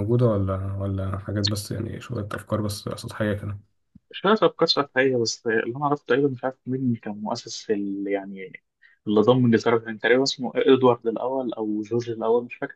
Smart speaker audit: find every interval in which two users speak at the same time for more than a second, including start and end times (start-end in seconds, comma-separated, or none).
none